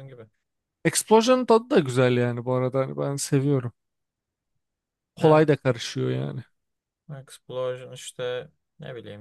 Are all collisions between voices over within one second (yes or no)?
yes